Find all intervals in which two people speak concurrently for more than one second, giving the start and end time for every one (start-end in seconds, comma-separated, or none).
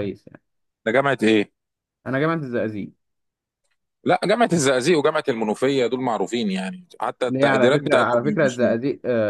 7.3-8.6